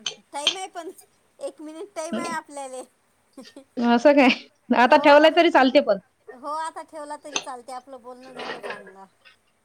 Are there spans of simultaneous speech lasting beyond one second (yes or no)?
no